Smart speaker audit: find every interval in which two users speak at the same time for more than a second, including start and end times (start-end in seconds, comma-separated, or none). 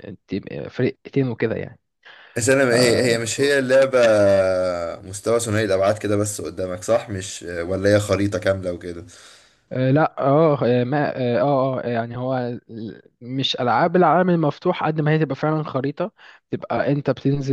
none